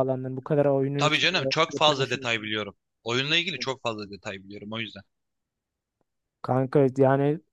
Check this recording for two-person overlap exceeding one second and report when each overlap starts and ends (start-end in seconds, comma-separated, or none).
1.0-2.5